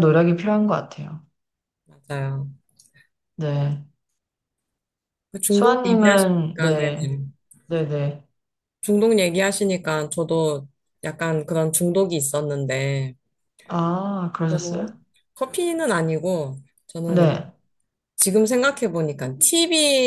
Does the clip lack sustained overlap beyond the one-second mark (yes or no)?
no